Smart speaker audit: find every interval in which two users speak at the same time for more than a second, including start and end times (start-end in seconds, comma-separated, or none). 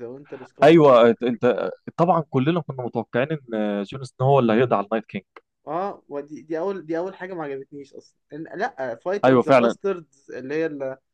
none